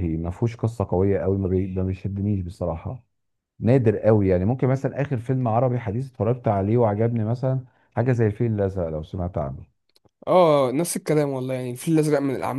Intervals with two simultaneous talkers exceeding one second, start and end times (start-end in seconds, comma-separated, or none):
none